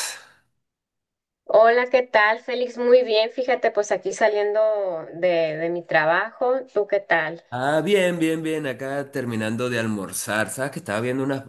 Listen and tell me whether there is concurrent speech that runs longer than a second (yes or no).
no